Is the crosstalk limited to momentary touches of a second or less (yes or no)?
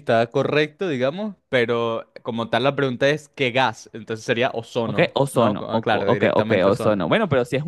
no